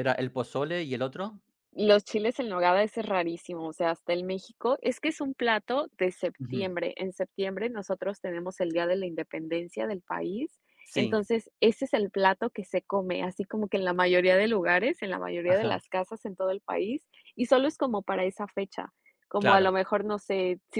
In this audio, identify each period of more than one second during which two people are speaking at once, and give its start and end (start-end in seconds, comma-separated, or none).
none